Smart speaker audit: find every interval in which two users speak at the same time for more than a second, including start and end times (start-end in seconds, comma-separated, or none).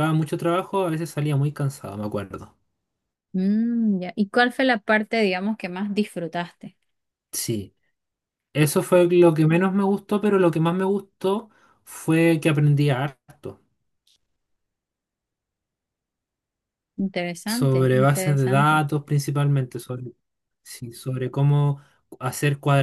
17.5-18.8